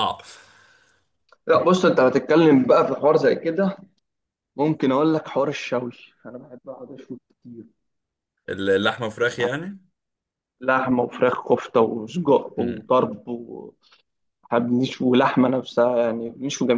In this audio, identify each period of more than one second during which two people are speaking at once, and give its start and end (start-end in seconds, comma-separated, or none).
none